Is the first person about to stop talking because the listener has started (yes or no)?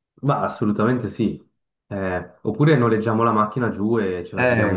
yes